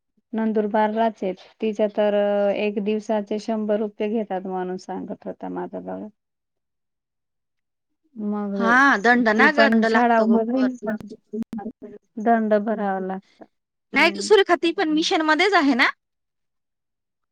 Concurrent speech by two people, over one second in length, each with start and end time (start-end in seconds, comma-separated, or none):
9.4-10.7